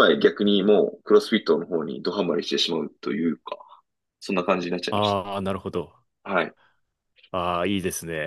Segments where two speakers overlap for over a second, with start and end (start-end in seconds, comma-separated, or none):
none